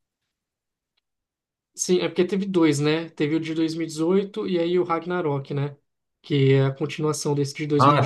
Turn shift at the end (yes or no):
yes